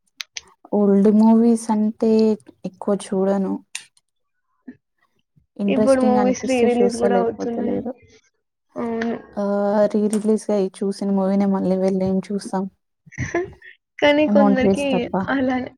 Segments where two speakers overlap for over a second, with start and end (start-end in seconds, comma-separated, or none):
5.7-7.8